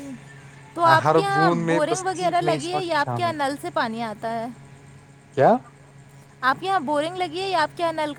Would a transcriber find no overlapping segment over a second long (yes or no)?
no